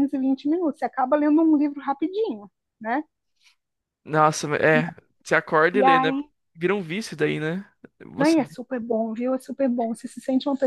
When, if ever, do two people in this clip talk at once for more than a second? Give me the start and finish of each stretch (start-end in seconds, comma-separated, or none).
none